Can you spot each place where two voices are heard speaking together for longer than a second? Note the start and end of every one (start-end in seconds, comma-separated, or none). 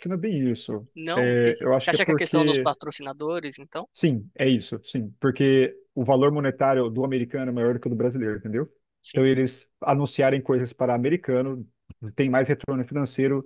0.9-2.7